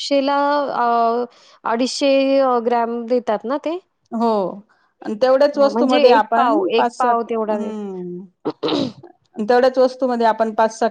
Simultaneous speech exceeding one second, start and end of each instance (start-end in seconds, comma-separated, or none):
5.5-7.7